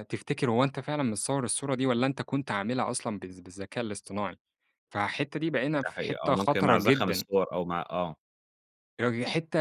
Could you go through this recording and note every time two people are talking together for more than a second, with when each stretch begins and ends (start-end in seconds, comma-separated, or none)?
5.8-7.3